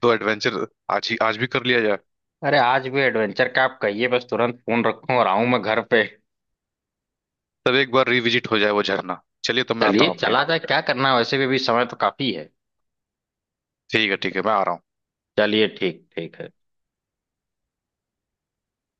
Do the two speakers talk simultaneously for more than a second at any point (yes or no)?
no